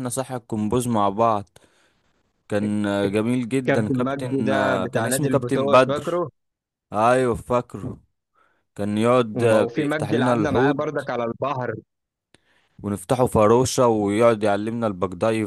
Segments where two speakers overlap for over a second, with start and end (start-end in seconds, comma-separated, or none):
3.7-6.2, 9.4-10.8